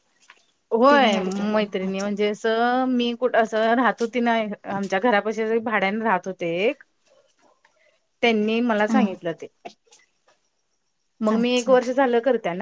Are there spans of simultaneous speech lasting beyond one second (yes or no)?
yes